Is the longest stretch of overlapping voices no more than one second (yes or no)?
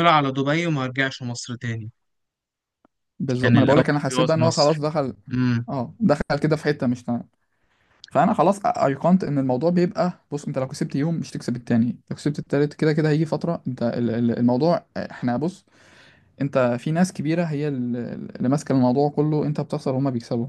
no